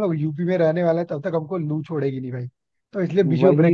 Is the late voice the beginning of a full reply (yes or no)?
yes